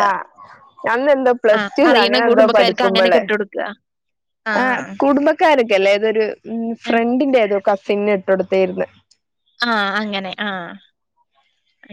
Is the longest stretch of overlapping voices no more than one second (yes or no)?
no